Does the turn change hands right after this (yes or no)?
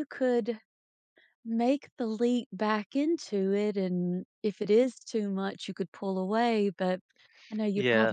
no